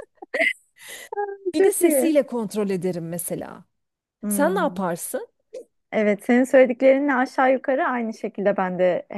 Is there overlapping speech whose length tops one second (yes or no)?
no